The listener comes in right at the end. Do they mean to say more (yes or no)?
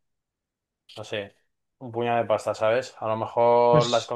no